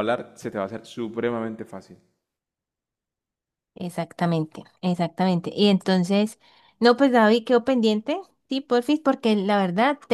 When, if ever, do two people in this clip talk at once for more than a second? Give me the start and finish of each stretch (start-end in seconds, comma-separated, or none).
none